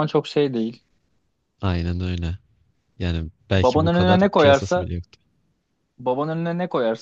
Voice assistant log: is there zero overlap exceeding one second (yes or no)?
no